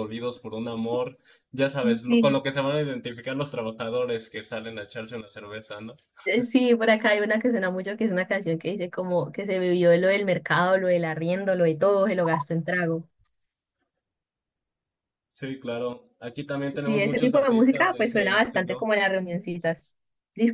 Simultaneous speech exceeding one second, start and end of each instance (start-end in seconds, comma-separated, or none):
16.8-18.9